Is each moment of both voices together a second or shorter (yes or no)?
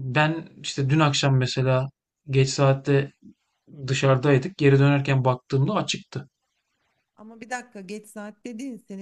yes